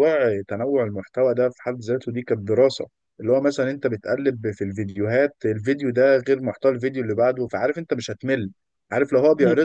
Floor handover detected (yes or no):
no